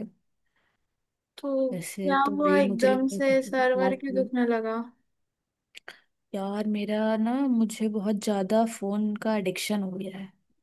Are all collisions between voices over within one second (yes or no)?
no